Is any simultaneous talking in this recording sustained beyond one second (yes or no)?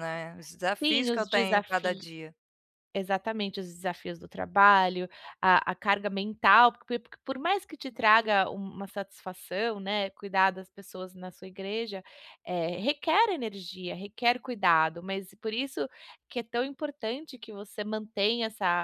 yes